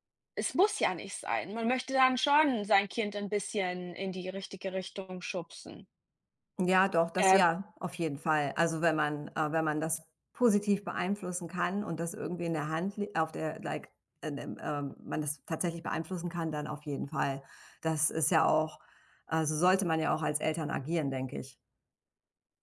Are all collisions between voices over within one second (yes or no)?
yes